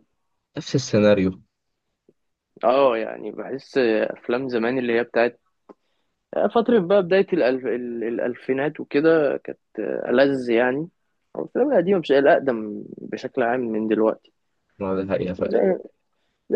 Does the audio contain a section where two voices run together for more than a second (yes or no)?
no